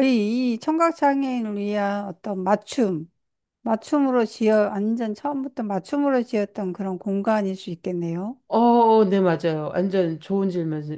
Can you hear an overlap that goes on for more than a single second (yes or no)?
no